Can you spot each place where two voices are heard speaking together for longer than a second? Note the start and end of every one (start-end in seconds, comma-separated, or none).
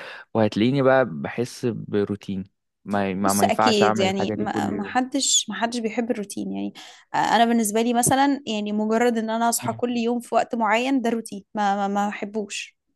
3.3-5.0